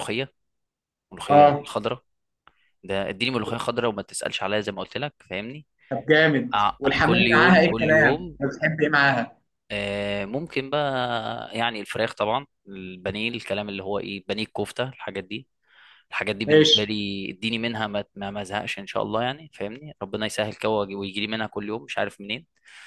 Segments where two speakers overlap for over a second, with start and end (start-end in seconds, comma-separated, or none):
6.5-8.4